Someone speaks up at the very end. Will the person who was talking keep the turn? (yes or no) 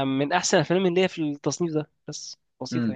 no